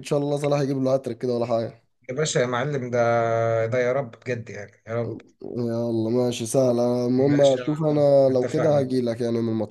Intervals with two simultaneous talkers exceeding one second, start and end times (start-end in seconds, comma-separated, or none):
7.2-8.9